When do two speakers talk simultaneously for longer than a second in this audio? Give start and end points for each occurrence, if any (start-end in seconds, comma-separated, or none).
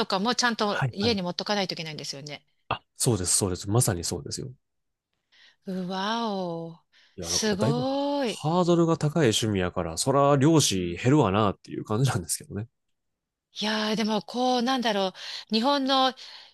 7.2-8.4